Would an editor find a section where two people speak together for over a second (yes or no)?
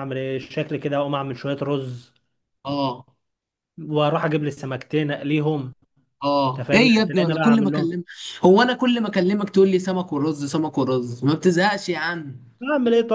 yes